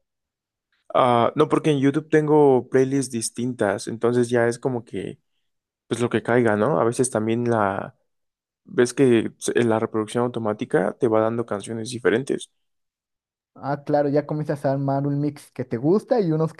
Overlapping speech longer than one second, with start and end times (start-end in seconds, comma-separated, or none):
none